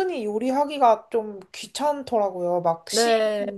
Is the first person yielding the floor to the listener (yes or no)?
no